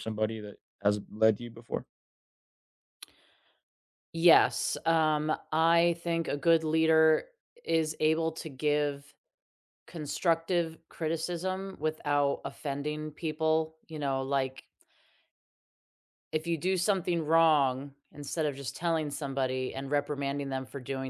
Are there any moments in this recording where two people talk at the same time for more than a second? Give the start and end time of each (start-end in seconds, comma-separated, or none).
none